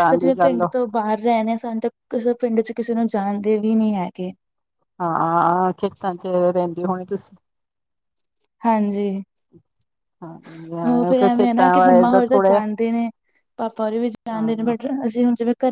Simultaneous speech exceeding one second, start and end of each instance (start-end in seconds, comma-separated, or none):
10.9-12.6